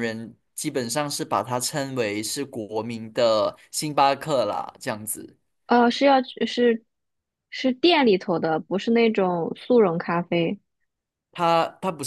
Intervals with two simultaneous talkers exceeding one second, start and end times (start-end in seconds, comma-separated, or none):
none